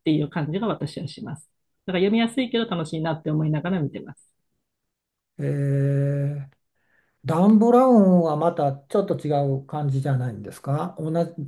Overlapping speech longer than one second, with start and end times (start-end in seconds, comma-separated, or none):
none